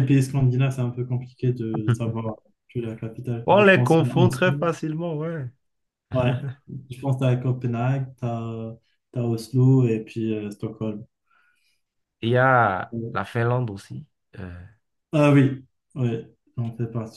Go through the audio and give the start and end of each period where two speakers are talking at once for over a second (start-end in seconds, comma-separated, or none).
3.5-4.7